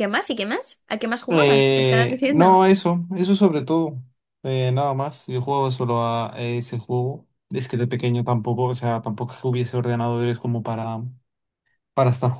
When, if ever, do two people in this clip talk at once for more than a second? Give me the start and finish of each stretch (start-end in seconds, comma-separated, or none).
1.3-2.6